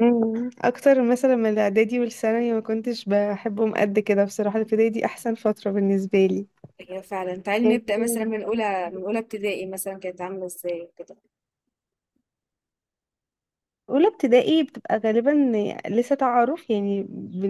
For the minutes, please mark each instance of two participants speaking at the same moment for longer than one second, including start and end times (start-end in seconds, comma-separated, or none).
7.6-9.2